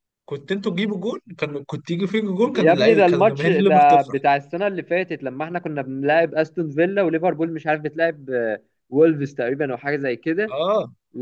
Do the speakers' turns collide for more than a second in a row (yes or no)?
yes